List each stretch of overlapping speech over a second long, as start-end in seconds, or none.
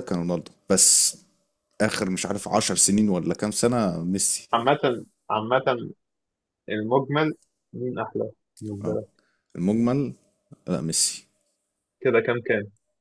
none